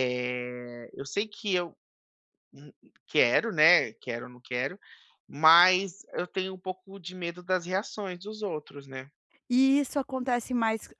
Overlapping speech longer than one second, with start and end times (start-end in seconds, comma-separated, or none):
none